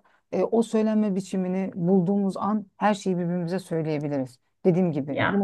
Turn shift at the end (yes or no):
no